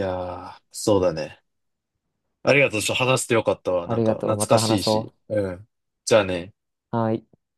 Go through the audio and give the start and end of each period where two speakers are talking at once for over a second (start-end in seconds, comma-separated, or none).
3.9-5.1